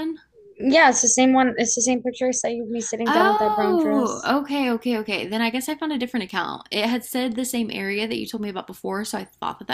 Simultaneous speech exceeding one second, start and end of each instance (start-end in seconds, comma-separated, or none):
3.1-4.3